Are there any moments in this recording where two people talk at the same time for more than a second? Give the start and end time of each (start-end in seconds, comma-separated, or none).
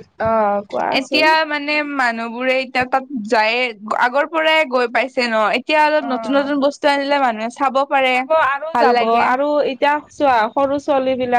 none